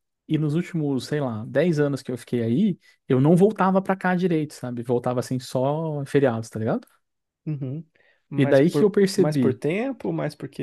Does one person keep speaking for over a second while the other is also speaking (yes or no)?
yes